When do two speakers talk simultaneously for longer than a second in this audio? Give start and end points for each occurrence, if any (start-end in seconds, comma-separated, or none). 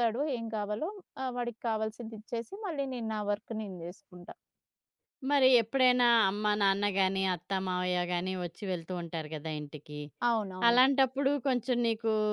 none